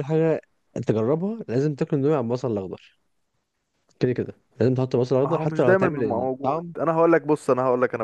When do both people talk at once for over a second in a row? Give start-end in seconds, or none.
5.2-6.7